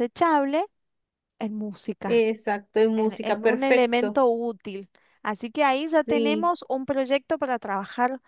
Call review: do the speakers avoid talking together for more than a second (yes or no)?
no